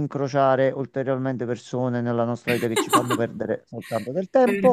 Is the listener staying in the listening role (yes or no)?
no